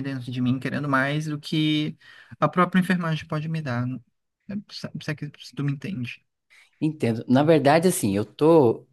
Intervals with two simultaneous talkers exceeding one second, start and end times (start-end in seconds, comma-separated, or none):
none